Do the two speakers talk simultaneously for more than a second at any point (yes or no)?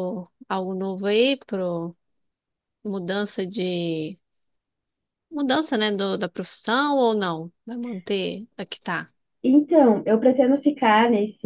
no